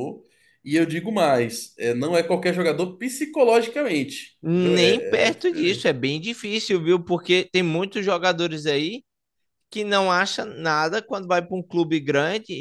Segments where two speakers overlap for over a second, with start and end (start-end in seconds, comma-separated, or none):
4.4-6.0